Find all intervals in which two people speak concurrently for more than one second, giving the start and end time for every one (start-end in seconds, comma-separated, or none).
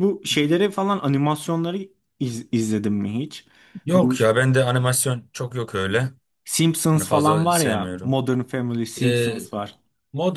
6.9-8.2